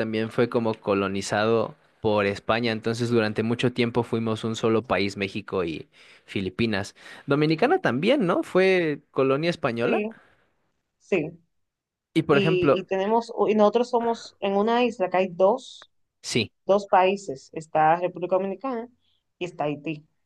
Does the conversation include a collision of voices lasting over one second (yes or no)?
no